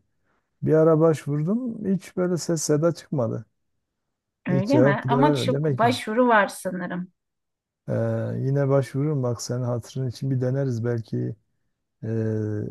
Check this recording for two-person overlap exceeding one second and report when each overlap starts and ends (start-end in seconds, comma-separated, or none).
4.5-6.0